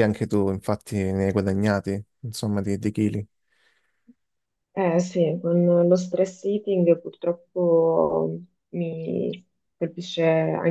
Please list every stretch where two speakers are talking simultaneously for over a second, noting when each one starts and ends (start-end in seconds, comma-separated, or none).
none